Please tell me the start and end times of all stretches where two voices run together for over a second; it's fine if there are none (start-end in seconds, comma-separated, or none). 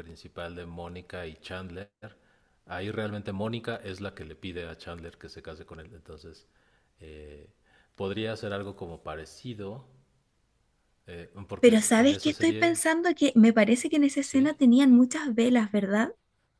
11.6-12.8